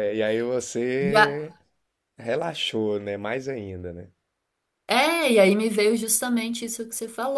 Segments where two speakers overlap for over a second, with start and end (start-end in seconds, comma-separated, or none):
none